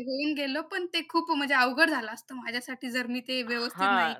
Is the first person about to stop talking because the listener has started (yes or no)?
yes